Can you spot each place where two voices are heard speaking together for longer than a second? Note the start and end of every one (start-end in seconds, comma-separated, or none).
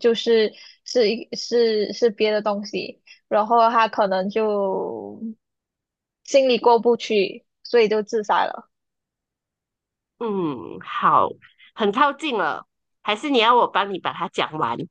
none